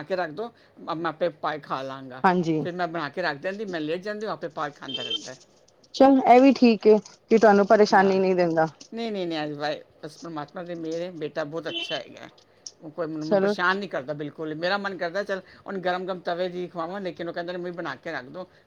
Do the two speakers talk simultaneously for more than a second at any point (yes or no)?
no